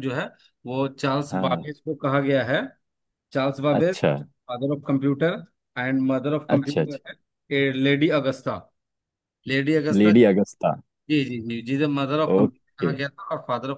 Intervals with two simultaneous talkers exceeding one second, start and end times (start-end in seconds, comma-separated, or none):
none